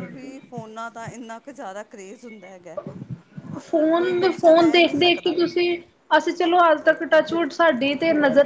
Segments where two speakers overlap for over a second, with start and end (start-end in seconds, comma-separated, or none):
3.8-5.3